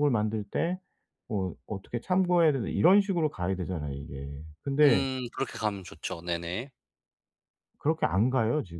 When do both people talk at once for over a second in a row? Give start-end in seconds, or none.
none